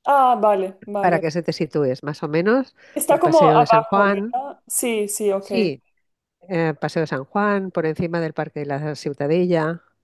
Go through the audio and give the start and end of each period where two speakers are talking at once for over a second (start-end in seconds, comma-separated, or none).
2.9-4.3